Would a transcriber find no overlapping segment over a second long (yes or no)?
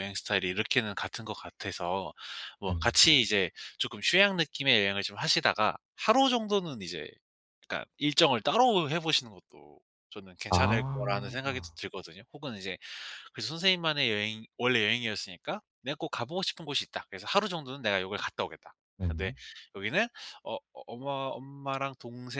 no